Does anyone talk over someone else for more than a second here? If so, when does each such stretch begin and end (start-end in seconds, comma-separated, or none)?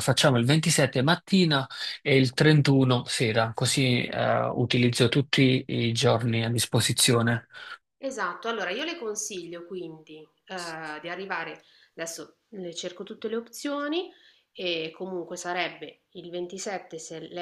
none